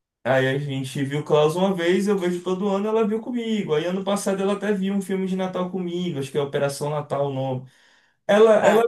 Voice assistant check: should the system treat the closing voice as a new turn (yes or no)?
no